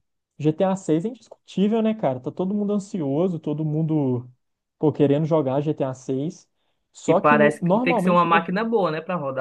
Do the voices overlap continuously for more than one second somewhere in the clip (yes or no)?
yes